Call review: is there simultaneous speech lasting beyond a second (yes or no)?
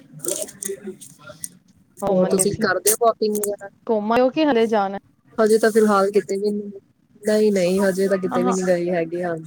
no